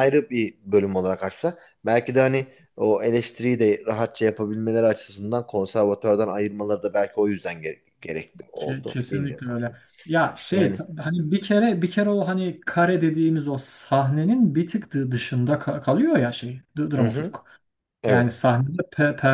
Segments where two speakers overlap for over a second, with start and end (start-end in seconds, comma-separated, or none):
8.6-9.8